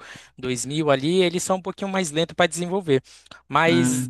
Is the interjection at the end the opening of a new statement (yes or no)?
no